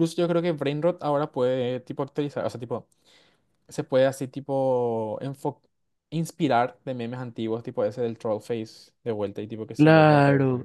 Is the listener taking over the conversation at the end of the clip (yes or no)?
yes